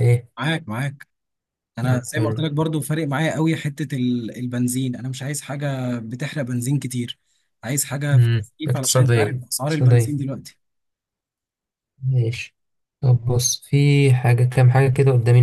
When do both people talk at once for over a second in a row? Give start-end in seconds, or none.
8.1-10.2